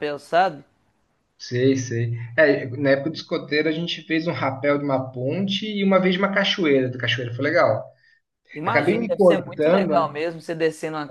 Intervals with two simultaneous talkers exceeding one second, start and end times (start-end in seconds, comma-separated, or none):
8.6-10.2